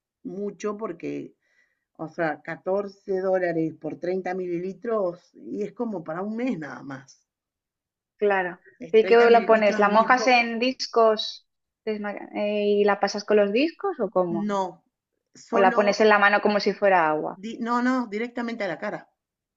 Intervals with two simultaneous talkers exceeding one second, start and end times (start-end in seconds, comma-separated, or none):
8.8-10.5